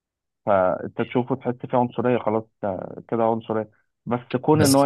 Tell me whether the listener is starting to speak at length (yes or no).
no